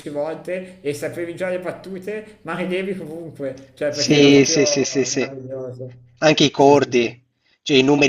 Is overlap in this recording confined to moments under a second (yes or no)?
no